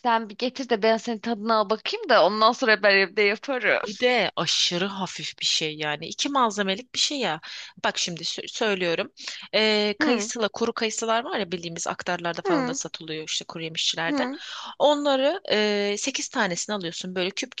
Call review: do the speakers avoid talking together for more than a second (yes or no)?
yes